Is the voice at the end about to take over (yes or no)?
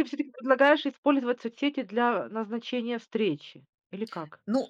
yes